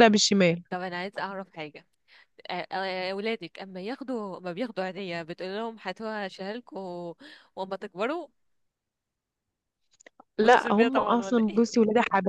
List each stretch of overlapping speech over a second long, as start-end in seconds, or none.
10.4-11.6